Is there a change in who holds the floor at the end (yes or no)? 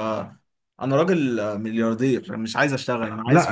yes